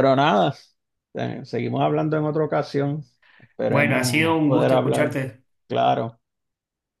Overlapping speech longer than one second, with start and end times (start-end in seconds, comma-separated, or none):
3.7-5.2